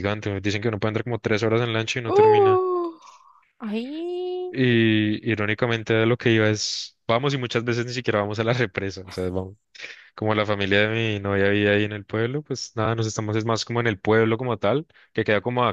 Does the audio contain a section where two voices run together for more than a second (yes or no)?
no